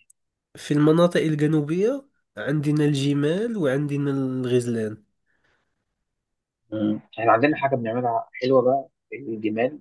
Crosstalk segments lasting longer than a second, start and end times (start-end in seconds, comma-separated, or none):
none